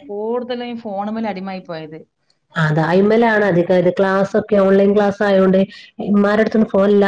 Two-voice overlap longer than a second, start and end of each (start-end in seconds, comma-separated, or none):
none